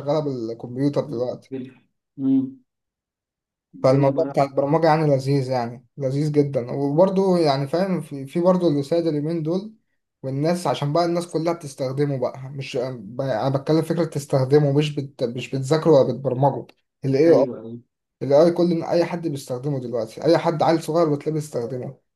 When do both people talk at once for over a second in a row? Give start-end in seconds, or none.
none